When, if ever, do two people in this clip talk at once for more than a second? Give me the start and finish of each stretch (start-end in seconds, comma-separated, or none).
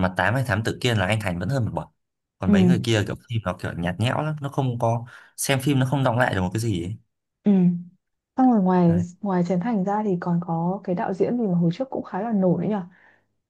none